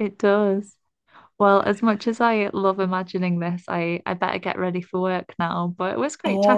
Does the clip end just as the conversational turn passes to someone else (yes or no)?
yes